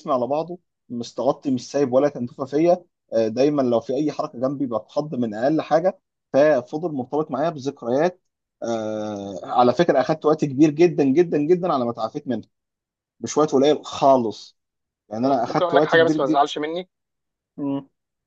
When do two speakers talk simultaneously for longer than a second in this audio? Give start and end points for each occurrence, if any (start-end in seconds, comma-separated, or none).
15.2-16.4